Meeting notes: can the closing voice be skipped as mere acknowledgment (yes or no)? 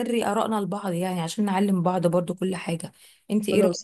yes